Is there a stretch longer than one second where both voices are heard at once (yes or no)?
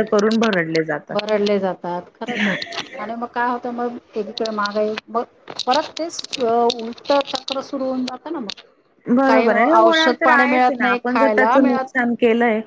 yes